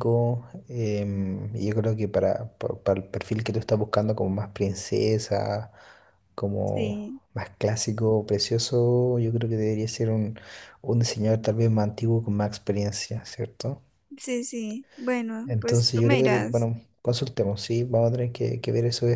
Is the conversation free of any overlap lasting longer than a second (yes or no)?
no